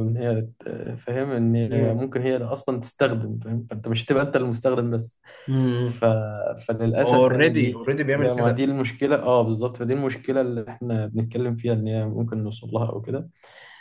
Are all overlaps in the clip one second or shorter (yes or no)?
no